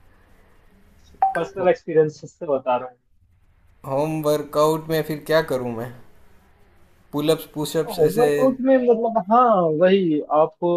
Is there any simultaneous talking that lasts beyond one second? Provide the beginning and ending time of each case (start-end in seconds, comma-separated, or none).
none